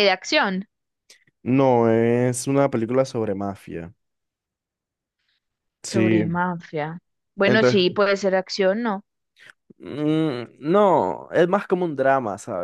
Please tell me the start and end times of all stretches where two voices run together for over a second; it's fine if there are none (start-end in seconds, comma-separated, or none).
none